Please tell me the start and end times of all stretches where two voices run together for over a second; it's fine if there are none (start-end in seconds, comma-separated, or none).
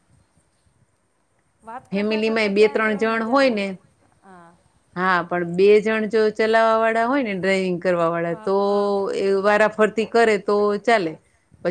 1.9-3.6